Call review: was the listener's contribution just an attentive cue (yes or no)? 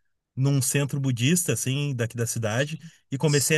yes